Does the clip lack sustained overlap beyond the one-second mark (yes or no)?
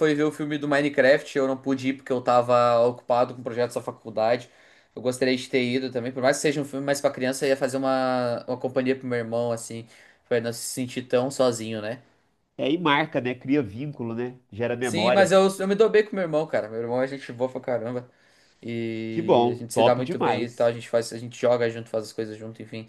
no